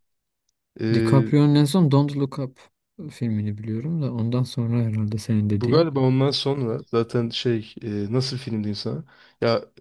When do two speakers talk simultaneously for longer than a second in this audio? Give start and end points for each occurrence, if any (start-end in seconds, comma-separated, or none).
none